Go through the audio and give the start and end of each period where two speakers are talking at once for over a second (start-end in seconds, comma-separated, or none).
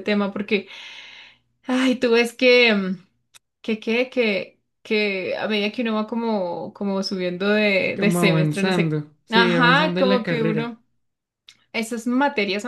8.0-10.7